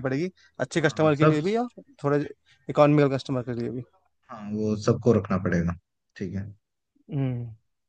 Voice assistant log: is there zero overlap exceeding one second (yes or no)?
yes